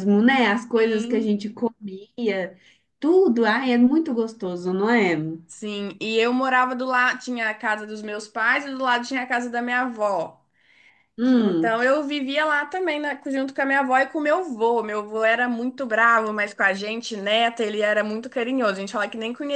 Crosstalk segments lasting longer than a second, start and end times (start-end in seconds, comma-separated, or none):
none